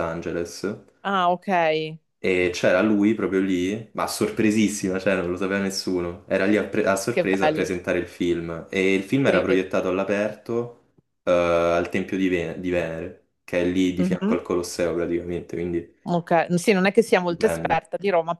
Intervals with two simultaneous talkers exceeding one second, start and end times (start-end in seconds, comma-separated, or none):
none